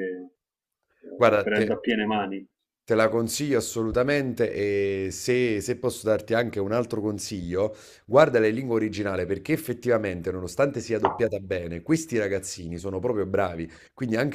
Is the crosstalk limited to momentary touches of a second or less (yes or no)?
yes